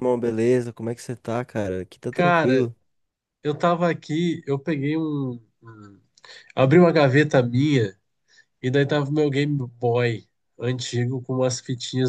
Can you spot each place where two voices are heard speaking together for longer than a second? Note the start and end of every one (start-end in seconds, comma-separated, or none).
none